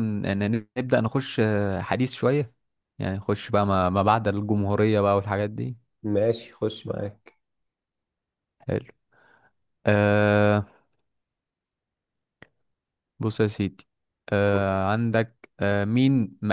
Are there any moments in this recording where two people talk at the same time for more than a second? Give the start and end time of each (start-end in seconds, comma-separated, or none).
none